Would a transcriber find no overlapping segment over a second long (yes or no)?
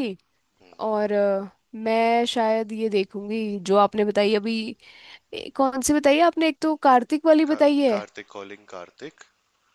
yes